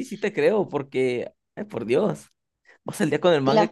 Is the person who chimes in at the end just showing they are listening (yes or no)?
yes